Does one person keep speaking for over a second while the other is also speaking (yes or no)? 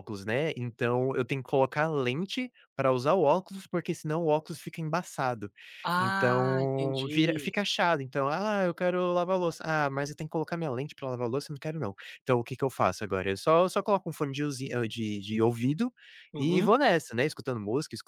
yes